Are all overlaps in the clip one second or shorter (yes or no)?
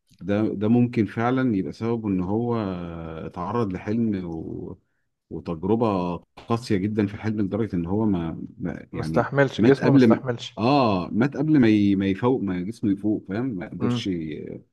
no